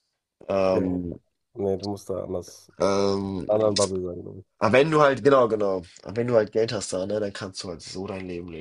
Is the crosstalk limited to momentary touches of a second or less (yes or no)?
yes